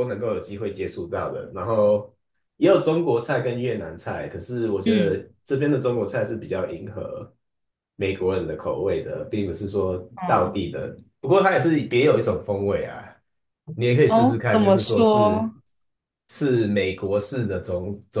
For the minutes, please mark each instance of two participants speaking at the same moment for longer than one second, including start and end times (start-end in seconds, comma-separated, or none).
14.1-15.5